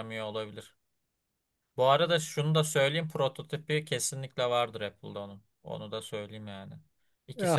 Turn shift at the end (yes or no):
no